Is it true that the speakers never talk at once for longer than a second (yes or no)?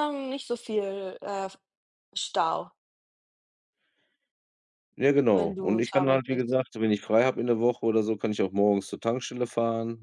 no